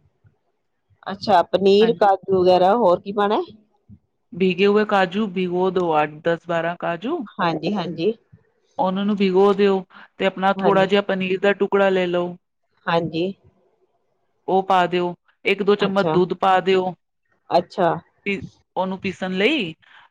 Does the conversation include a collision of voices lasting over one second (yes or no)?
no